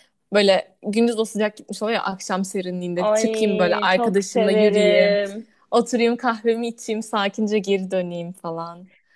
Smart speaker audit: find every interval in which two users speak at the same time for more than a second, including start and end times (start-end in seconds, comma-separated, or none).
3.0-5.2